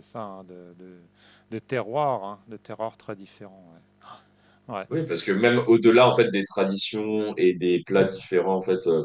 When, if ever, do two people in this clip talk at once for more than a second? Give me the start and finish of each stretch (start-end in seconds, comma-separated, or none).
none